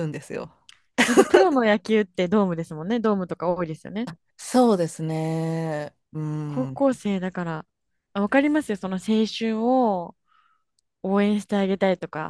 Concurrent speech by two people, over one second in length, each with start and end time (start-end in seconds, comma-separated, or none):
none